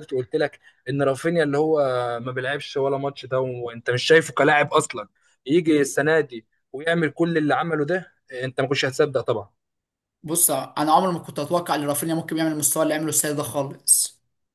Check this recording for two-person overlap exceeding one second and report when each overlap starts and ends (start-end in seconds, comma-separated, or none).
none